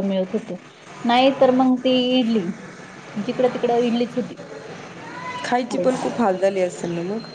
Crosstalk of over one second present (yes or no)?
no